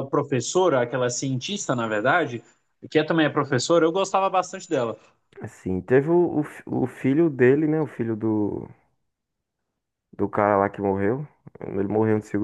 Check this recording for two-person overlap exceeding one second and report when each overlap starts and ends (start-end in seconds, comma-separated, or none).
none